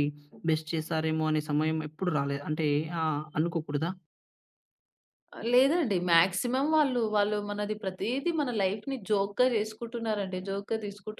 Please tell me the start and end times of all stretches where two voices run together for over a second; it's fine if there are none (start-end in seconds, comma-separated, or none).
none